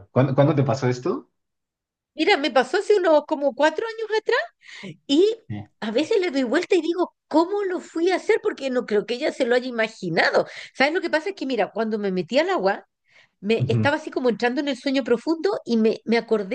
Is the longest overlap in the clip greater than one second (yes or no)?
no